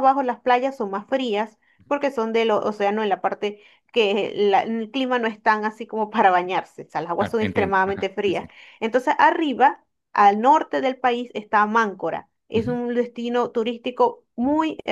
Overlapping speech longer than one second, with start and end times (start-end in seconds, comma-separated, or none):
7.2-8.4